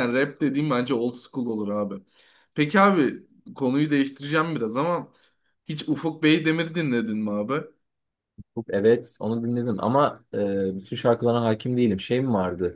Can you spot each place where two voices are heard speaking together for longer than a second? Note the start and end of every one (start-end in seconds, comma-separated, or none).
none